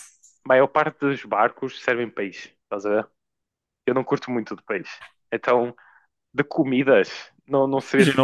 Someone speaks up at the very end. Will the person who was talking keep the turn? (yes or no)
no